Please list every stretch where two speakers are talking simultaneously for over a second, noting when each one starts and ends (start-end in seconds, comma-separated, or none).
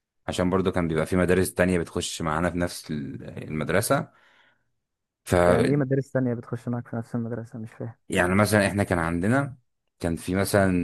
none